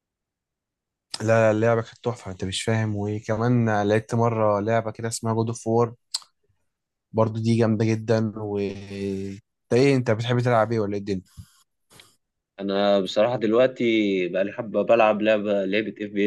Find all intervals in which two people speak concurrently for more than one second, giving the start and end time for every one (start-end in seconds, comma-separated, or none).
none